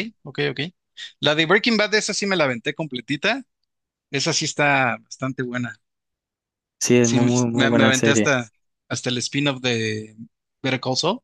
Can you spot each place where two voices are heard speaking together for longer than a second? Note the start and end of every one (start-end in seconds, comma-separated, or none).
6.8-8.3